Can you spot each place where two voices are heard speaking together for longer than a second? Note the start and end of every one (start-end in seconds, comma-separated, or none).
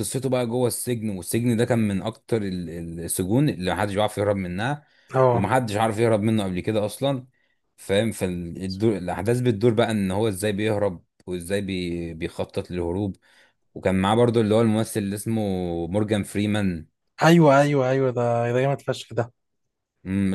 none